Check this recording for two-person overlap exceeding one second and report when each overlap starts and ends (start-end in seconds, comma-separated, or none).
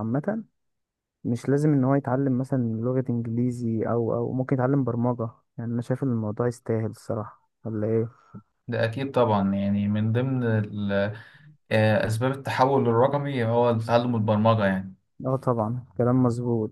none